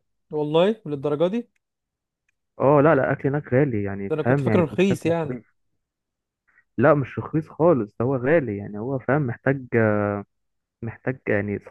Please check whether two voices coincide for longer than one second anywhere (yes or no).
yes